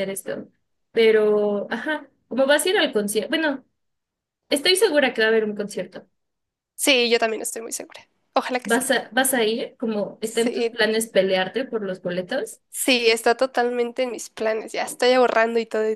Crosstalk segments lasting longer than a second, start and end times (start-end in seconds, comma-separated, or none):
none